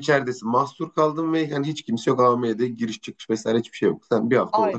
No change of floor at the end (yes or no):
no